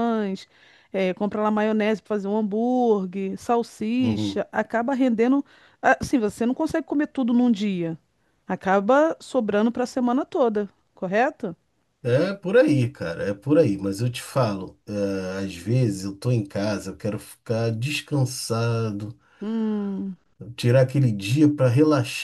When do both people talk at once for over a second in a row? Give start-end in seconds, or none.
none